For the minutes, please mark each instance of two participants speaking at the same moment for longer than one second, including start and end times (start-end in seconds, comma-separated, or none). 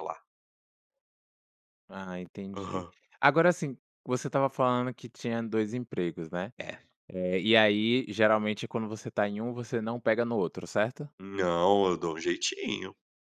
none